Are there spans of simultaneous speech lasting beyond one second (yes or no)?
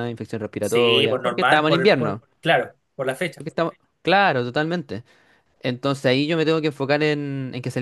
yes